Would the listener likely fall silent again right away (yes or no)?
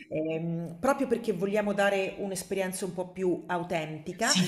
no